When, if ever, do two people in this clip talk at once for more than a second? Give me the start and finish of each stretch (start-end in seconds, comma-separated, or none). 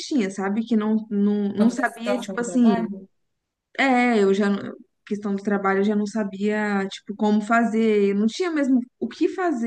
1.6-2.9